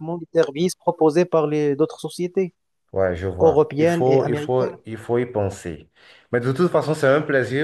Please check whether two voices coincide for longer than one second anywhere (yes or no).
yes